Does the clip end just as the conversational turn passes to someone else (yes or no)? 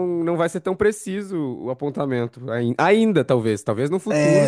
yes